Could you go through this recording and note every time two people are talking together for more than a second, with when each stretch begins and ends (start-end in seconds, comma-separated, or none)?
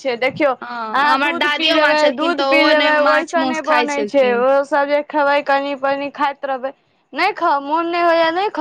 1.0-4.4